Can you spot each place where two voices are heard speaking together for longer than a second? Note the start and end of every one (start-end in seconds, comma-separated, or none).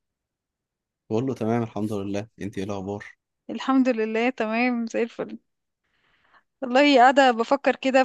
none